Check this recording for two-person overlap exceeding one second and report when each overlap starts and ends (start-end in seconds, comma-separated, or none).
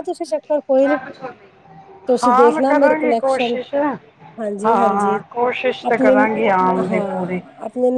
2.2-3.5